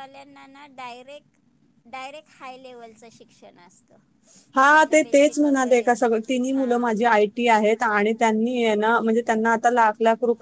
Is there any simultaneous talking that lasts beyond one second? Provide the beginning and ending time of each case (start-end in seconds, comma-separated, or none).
4.7-6.9